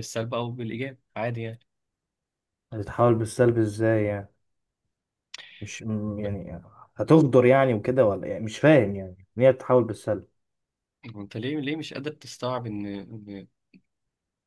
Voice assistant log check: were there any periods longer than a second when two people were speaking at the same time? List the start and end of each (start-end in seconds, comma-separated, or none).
none